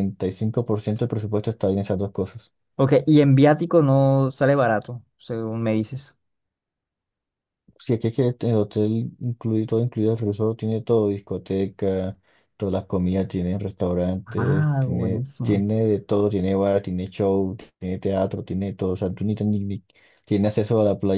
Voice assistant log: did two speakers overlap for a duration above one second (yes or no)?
yes